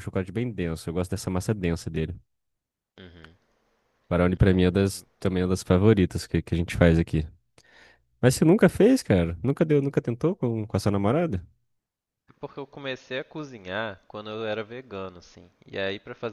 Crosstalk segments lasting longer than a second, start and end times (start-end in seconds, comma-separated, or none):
none